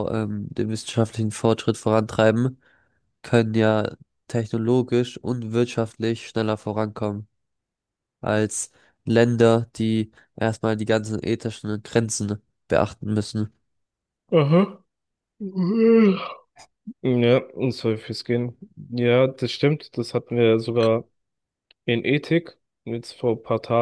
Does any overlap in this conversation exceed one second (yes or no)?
no